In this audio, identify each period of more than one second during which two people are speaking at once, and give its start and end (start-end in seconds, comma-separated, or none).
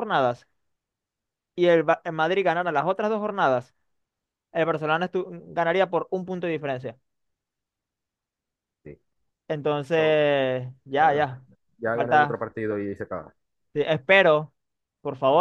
none